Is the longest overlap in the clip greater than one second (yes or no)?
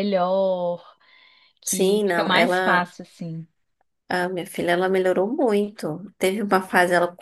yes